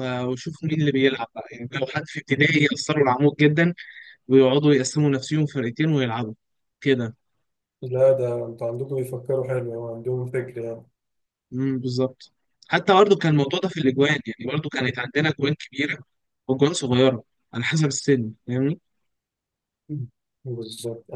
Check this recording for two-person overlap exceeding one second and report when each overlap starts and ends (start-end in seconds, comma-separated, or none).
none